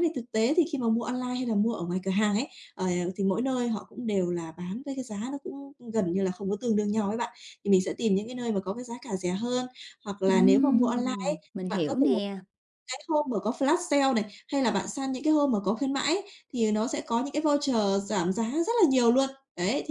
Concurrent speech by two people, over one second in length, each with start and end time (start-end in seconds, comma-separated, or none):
10.2-12.1